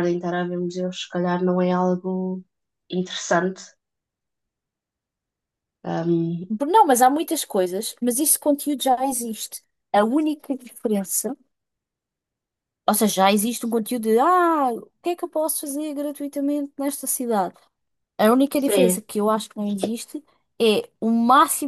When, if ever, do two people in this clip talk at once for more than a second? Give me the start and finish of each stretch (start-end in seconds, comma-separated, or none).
none